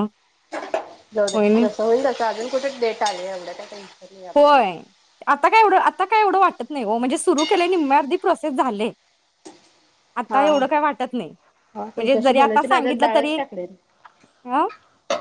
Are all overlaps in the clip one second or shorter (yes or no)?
no